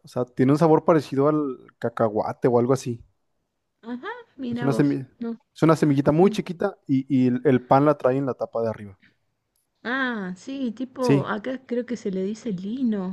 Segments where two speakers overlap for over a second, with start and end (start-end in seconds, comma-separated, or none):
none